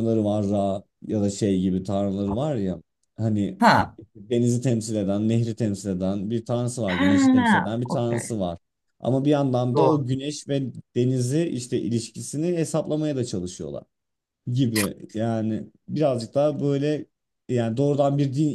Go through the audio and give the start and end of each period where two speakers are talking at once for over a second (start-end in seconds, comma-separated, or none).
6.9-8.3